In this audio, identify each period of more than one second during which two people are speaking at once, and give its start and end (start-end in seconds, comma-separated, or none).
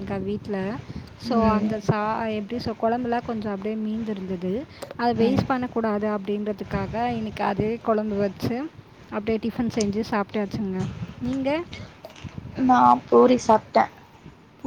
none